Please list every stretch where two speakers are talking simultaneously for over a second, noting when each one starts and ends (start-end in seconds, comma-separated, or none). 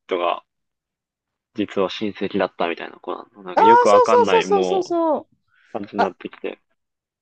3.5-5.0